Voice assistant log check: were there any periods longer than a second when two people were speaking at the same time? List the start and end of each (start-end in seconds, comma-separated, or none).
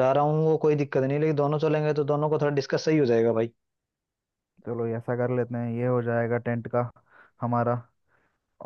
none